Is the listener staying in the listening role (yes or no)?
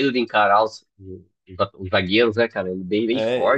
no